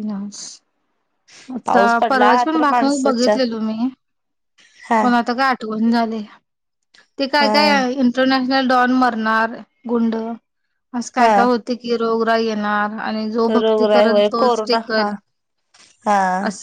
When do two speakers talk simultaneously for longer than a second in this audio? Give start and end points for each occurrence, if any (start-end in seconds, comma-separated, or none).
1.6-3.4, 13.6-15.1